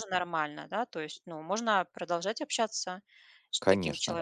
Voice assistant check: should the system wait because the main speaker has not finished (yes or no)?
no